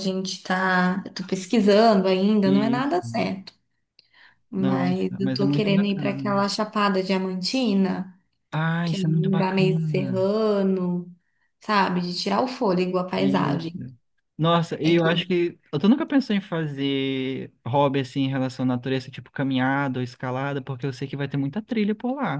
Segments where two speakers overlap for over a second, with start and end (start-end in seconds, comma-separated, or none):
4.6-6.3, 8.8-10.3